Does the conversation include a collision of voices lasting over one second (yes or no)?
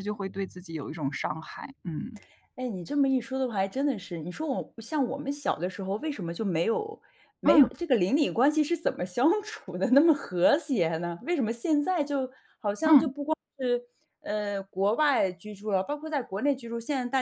no